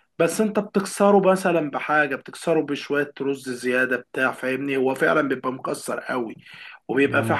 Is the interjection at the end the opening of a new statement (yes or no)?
no